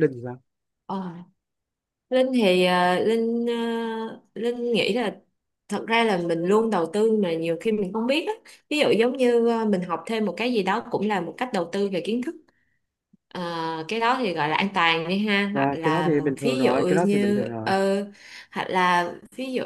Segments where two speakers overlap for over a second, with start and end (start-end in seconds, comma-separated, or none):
15.5-17.7